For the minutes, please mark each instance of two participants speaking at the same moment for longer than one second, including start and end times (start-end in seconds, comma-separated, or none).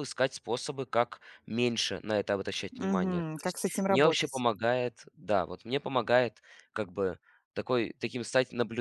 2.7-4.4